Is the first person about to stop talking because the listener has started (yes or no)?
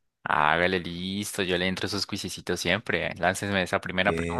yes